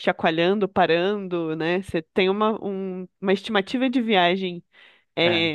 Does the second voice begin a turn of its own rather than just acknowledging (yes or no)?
no